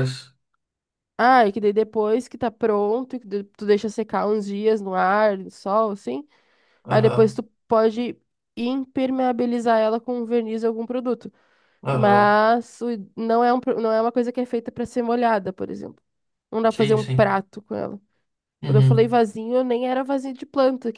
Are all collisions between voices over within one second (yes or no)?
yes